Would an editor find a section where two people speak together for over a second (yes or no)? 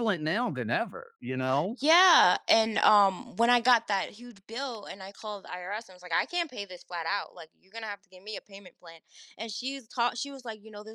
no